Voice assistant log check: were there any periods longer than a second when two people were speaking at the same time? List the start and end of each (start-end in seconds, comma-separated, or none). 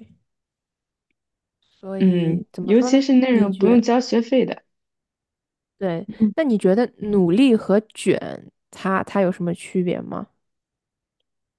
2.0-3.8